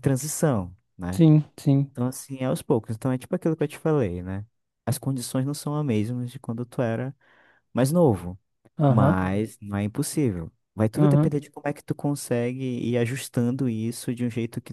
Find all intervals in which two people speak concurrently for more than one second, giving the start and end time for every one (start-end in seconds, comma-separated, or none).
none